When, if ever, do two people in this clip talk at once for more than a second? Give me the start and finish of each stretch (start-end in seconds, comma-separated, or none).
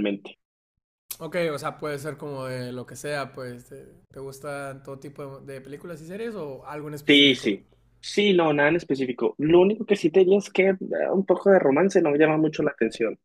none